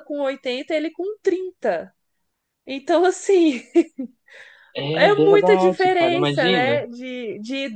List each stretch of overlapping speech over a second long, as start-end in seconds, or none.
5.0-6.8